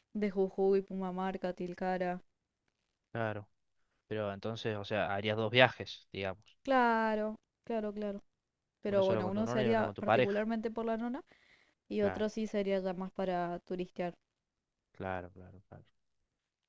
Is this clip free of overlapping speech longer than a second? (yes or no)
no